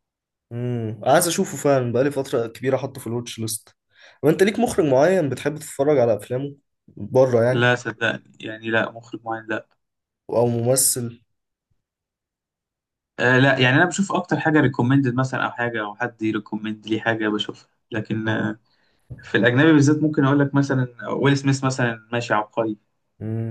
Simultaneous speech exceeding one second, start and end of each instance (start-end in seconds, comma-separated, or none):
none